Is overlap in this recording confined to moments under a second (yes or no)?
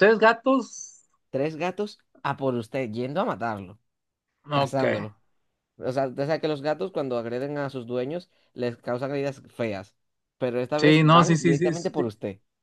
no